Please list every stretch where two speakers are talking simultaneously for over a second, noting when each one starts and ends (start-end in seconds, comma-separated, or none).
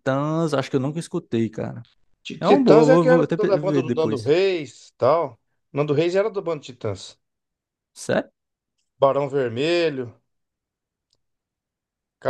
2.4-4.3